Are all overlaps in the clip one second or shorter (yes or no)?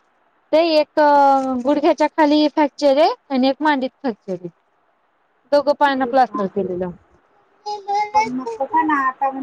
yes